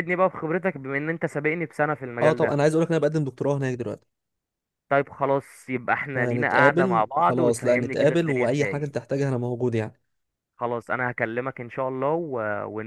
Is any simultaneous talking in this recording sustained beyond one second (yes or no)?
yes